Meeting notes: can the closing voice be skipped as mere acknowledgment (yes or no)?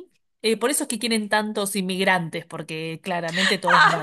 no